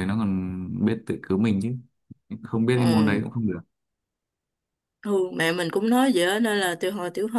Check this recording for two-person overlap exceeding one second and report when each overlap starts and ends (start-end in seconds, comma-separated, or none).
none